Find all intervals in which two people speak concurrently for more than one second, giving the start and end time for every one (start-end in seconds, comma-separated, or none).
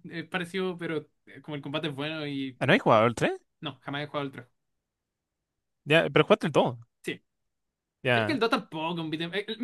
none